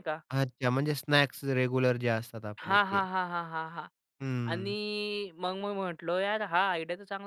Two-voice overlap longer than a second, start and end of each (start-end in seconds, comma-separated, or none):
none